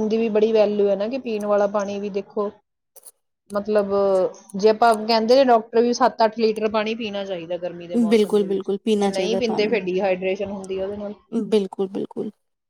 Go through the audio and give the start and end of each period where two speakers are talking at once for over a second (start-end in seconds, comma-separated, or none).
8.1-9.8